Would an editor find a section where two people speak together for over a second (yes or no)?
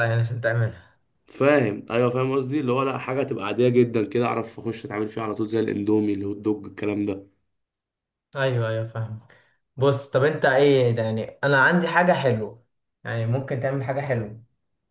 no